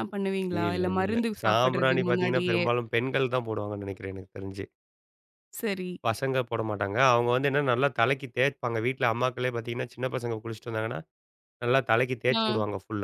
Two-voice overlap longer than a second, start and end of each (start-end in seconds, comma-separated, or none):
0.7-2.6